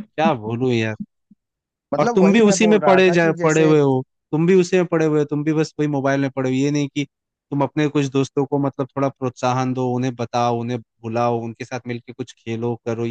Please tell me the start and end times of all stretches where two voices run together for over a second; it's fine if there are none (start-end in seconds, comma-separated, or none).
2.0-3.7